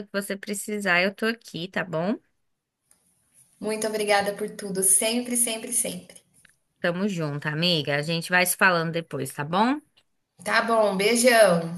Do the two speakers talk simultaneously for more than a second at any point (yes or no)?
no